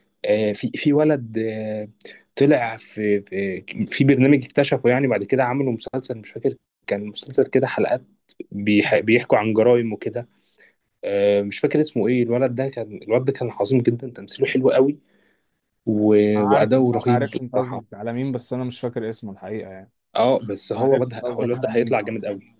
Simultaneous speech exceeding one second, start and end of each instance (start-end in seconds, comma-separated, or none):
16.3-17.8, 20.8-22.0